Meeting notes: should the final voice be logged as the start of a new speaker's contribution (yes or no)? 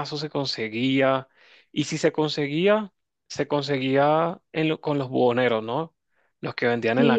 yes